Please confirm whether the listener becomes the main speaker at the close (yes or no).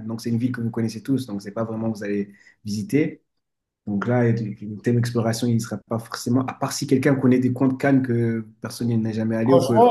yes